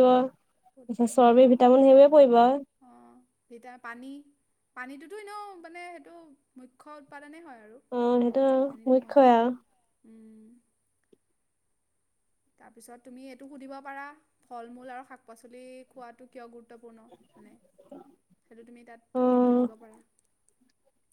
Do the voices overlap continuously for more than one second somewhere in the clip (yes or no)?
yes